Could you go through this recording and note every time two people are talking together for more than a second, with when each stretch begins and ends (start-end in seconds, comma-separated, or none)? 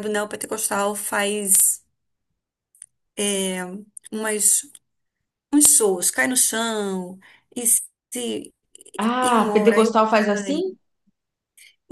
9.2-10.6